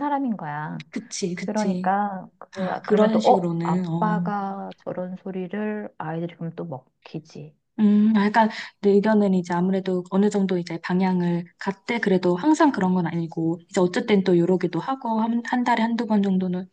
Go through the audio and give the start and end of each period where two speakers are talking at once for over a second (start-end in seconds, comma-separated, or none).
2.9-4.2